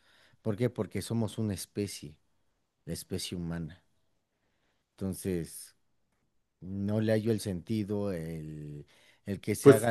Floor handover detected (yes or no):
no